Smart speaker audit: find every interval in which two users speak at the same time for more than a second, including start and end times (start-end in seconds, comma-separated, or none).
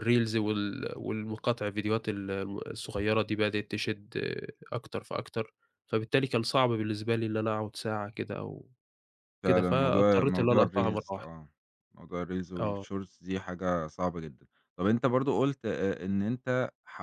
9.4-11.3